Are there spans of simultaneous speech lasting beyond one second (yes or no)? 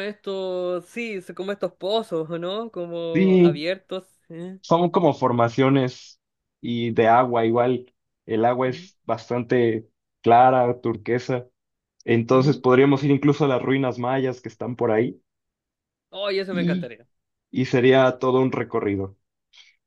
no